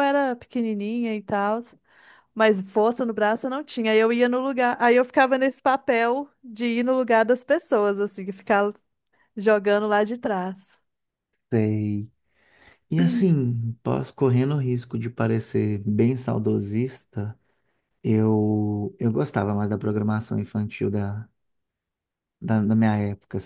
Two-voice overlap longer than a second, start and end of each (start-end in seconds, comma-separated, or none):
none